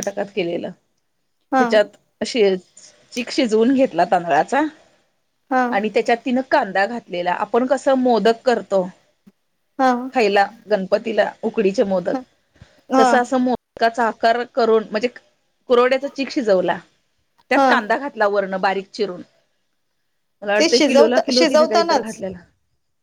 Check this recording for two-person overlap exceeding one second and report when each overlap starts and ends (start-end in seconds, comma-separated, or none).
20.6-22.1